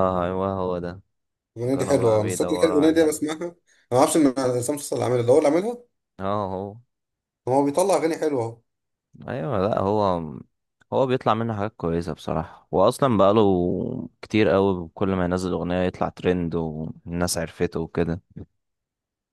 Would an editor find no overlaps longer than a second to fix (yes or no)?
no